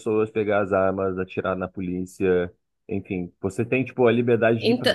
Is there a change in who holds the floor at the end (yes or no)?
no